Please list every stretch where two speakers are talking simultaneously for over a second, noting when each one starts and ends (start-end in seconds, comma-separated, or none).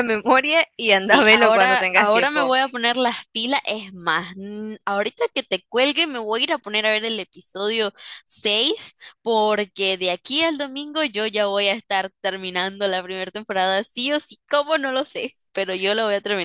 1.0-2.5